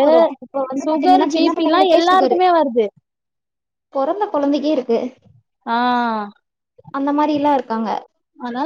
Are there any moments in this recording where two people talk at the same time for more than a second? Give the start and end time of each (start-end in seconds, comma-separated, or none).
0.8-2.4